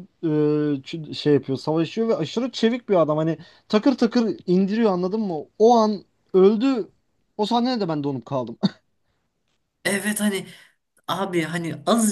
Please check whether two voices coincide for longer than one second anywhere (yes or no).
no